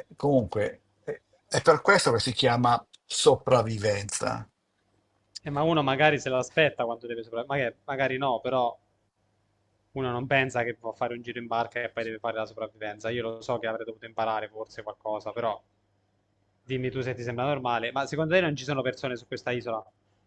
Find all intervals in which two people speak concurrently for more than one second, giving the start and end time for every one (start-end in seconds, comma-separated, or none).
none